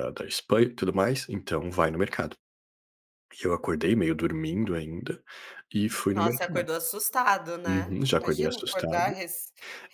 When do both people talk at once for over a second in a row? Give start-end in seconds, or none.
7.6-9.2